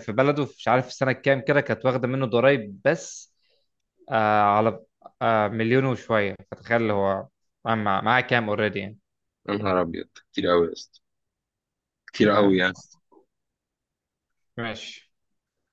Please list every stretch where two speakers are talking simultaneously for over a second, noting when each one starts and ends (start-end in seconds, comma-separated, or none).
none